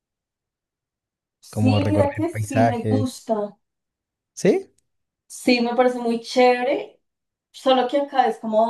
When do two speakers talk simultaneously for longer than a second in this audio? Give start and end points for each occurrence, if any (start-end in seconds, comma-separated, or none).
1.5-3.1